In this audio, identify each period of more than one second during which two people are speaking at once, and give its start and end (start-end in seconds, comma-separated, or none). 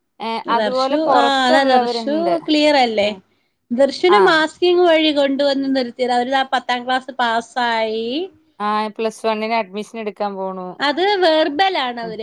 0.6-2.4